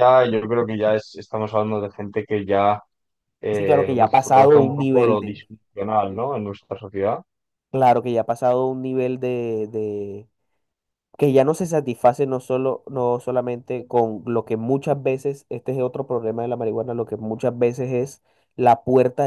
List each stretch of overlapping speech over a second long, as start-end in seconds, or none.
3.5-5.4